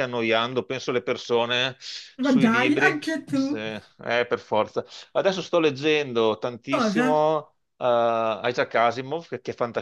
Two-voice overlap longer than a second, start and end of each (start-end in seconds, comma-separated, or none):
2.2-3.6